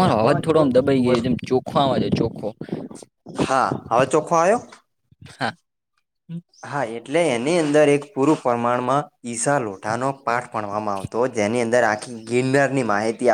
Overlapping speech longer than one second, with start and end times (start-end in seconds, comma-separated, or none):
none